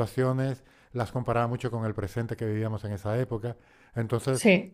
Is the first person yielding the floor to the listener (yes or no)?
no